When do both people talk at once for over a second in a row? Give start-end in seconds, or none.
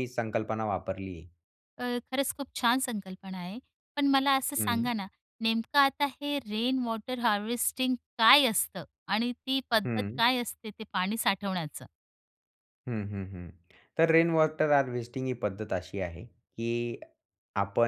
none